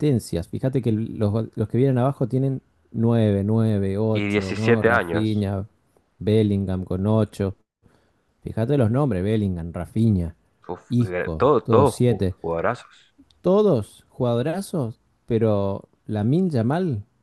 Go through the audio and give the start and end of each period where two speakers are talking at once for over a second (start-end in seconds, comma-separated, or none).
4.1-5.5, 10.9-12.4